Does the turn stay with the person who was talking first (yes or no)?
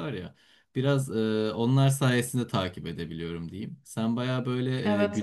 yes